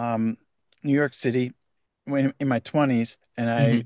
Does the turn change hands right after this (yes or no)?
no